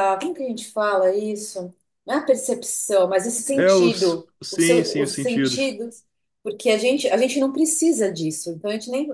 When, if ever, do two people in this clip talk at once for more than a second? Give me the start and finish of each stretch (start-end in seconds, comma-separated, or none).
3.5-5.7